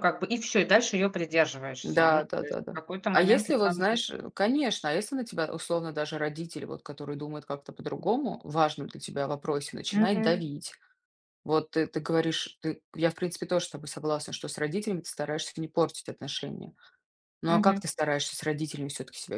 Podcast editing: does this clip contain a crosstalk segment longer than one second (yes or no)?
yes